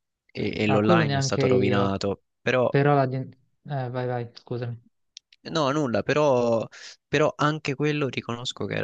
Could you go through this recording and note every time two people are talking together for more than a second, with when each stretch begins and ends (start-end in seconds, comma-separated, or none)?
0.7-1.9